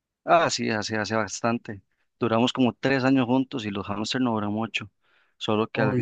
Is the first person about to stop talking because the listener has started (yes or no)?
no